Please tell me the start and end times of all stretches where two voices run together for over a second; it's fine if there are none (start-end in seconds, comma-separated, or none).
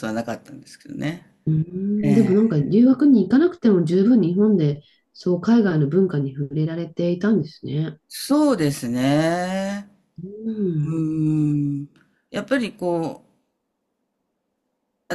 none